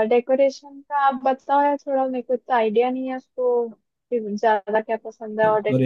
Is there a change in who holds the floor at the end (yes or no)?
yes